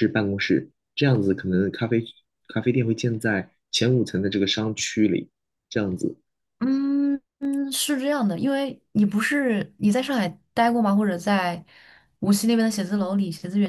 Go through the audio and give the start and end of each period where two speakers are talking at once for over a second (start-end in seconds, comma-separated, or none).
none